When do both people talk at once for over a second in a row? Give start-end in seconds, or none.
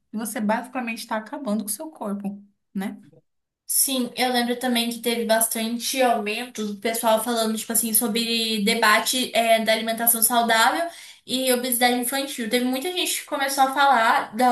none